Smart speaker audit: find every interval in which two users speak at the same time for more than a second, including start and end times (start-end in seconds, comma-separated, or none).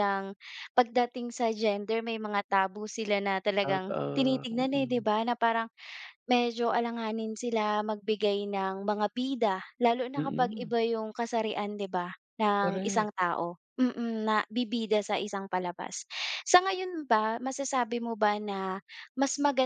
3.6-5.0